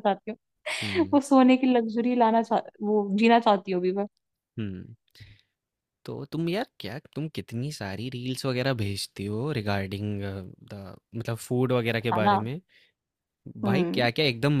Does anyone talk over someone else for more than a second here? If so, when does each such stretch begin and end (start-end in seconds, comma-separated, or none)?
none